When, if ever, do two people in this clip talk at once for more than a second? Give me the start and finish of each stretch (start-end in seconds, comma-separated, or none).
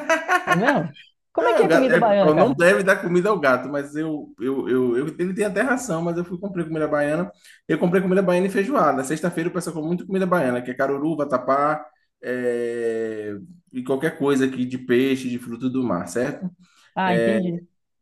1.4-2.6